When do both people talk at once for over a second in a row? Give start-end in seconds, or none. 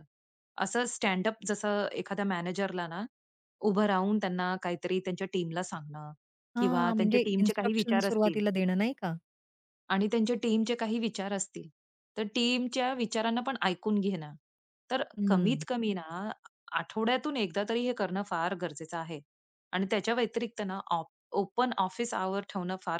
6.6-8.4